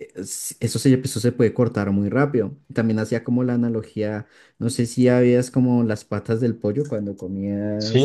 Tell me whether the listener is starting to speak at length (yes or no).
yes